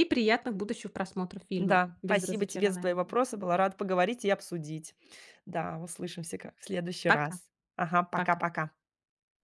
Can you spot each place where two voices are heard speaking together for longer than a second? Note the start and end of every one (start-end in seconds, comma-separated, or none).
1.6-3.0